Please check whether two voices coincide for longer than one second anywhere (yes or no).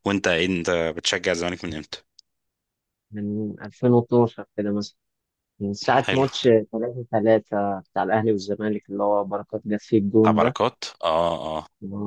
no